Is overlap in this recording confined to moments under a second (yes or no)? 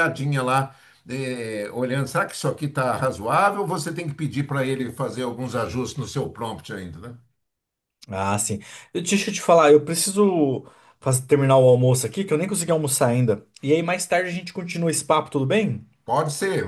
yes